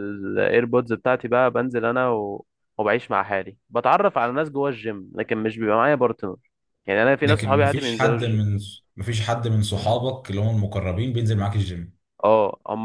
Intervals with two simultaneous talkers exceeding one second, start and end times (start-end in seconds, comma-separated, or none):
7.2-8.5